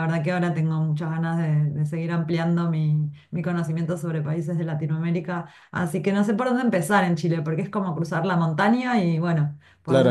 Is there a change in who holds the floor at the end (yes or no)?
yes